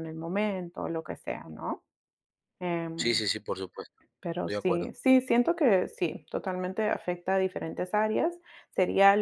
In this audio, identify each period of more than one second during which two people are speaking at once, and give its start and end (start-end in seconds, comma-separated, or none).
none